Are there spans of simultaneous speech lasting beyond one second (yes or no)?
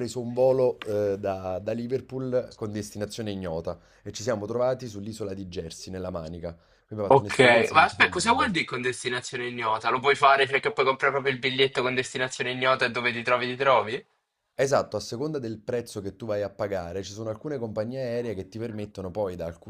yes